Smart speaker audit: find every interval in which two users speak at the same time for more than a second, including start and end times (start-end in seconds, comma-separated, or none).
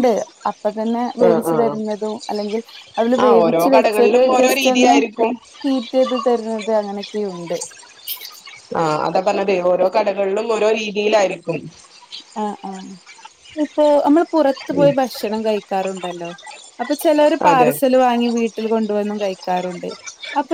3.2-5.0